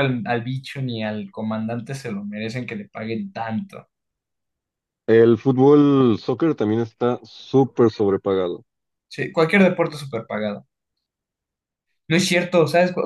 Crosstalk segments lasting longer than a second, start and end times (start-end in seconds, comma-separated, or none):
none